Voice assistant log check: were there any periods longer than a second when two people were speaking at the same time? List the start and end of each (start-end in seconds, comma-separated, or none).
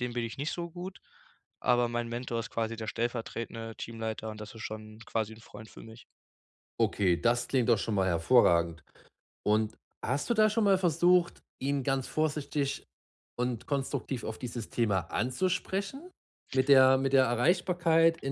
none